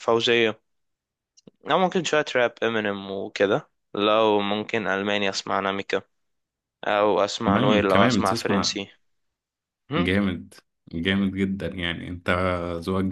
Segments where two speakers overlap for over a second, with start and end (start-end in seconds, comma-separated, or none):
7.5-8.8